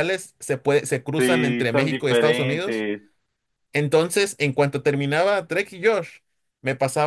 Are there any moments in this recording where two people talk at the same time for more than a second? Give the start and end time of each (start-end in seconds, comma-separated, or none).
1.2-2.9